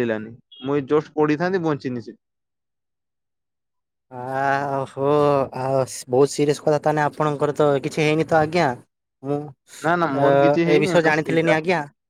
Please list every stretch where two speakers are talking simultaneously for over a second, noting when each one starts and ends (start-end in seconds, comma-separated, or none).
9.8-11.5